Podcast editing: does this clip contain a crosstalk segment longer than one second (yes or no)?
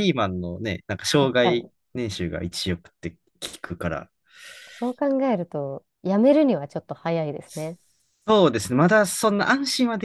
no